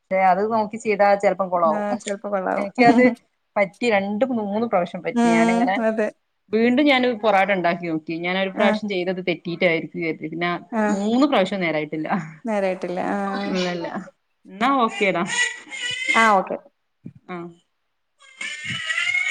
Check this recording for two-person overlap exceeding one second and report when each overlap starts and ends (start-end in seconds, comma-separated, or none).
none